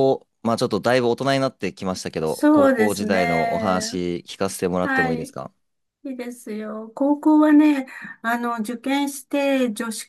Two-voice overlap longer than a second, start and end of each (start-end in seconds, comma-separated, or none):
2.2-3.9